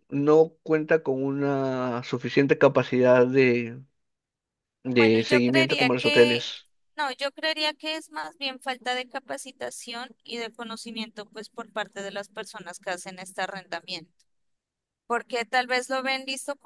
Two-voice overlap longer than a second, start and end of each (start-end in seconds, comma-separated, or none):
5.0-6.5